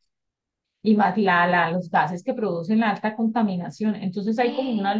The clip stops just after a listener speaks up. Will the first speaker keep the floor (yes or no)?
yes